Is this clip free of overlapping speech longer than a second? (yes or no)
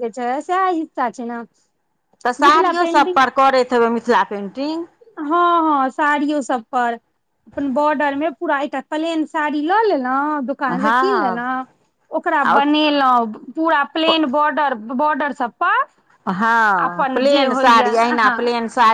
yes